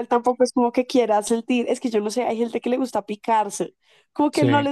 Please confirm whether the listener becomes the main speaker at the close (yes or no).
no